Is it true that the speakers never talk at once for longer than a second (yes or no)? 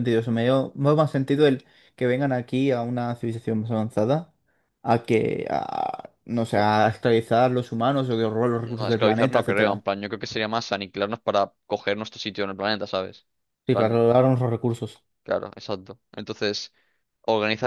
no